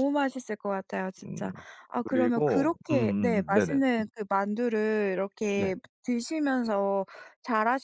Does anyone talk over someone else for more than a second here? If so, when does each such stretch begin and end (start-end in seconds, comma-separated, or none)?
2.1-4.0